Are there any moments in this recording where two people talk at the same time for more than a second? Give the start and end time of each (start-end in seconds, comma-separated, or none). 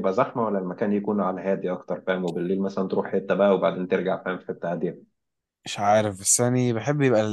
none